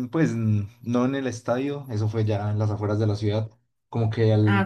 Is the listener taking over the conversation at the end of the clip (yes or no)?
no